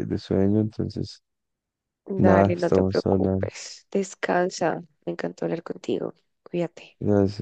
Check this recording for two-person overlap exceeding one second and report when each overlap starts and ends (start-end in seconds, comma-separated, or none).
2.1-3.5